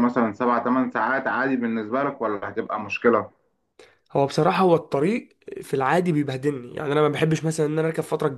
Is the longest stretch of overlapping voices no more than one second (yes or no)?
yes